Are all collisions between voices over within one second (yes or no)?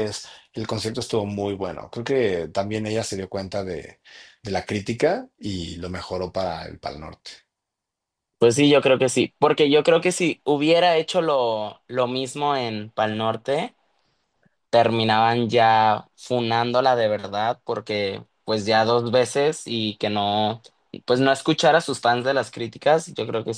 yes